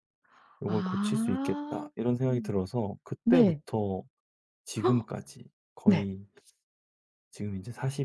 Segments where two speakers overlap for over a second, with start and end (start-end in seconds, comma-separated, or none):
0.6-1.9